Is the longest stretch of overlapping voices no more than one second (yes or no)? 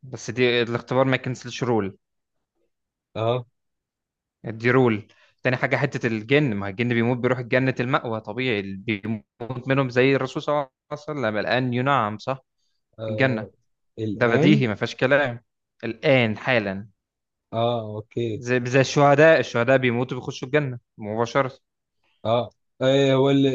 yes